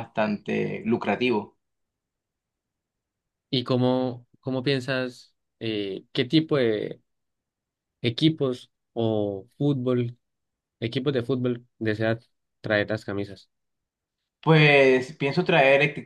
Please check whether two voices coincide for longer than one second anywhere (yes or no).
no